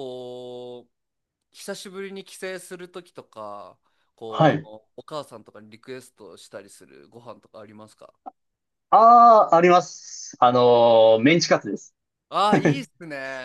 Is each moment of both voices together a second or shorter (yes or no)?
yes